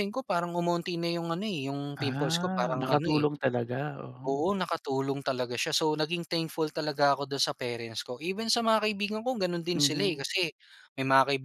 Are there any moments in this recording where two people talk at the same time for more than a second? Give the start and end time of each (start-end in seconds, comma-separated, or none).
2.0-3.2